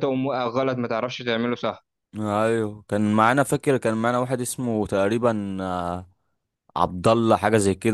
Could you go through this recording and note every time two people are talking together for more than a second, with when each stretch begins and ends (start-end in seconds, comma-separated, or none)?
none